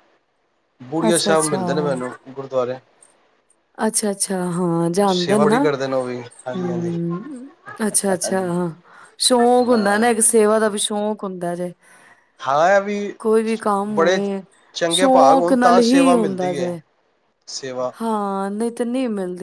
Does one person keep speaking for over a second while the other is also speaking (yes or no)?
yes